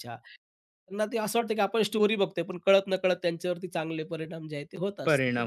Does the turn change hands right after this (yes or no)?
yes